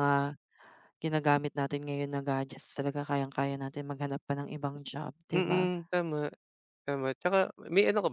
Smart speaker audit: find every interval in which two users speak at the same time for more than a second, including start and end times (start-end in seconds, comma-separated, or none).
none